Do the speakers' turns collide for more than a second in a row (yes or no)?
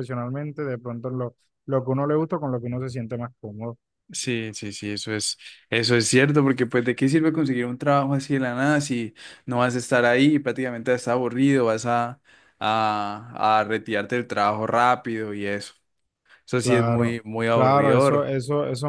yes